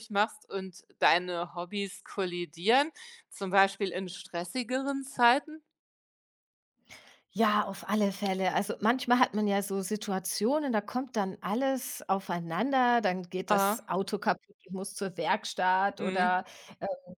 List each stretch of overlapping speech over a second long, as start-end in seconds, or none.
none